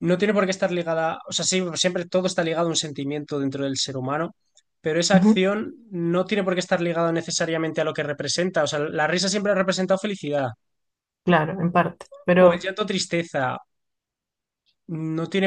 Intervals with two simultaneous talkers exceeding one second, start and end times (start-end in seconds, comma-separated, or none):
none